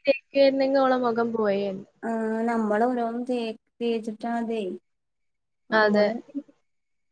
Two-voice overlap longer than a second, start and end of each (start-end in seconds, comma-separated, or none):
none